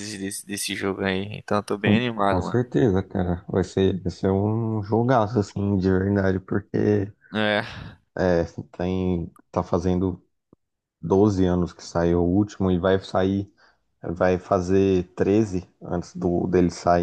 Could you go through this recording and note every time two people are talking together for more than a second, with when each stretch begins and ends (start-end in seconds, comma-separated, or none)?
none